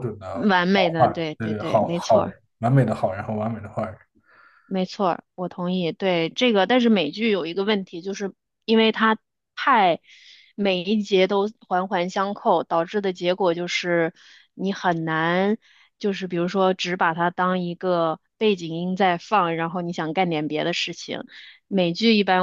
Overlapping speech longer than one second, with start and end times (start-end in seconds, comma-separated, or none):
1.0-2.3